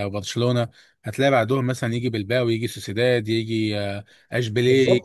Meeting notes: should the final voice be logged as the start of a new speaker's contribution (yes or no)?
yes